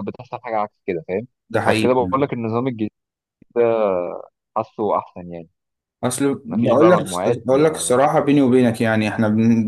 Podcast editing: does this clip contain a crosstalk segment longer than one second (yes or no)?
yes